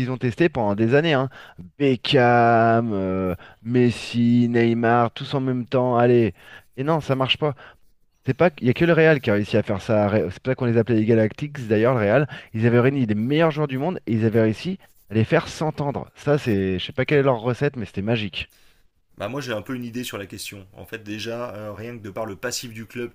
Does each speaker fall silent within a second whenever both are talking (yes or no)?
yes